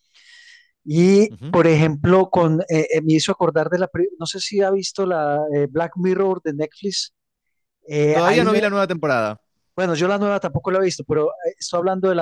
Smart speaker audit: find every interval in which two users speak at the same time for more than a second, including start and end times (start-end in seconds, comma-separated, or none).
none